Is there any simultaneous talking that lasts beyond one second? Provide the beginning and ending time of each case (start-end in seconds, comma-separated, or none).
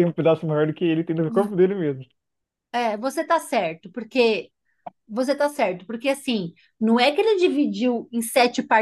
none